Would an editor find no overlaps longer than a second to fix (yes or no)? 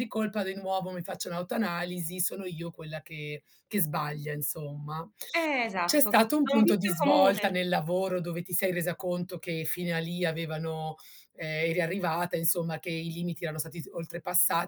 no